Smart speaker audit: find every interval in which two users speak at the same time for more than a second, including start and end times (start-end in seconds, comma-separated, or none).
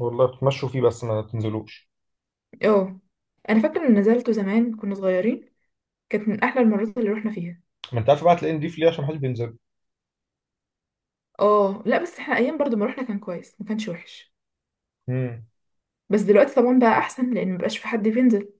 none